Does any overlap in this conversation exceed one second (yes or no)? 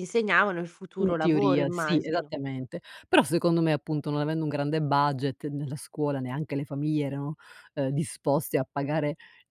yes